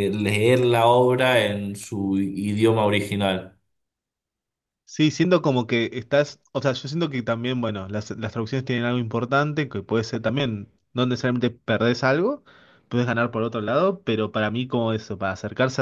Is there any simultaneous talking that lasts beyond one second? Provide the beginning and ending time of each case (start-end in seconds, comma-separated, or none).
none